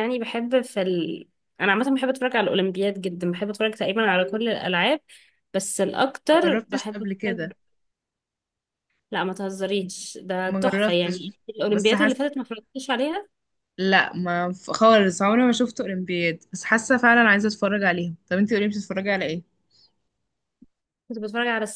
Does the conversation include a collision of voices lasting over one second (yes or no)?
yes